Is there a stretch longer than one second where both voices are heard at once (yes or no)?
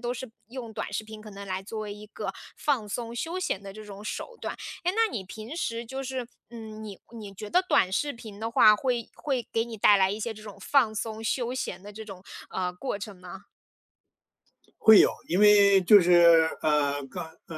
no